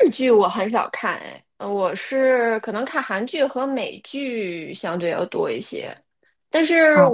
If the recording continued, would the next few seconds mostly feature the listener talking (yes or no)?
no